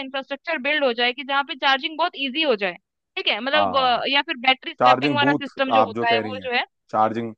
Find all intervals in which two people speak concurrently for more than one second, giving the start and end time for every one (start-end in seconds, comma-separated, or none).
4.8-6.5